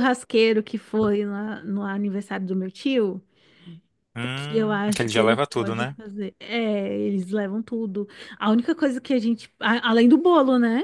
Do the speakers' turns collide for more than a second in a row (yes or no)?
yes